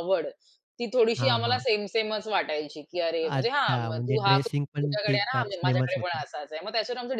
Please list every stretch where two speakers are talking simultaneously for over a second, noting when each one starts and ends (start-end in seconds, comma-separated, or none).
3.2-6.2